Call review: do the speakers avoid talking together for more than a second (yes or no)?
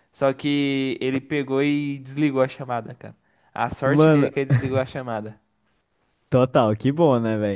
yes